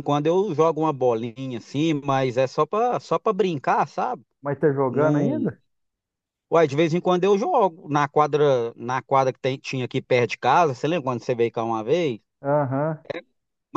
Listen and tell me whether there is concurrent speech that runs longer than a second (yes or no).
no